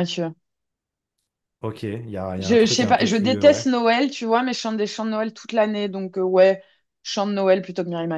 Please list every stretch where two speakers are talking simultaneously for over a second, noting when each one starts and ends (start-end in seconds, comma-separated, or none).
2.4-3.7